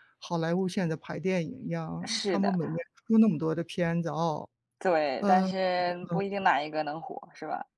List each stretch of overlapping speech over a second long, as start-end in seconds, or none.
none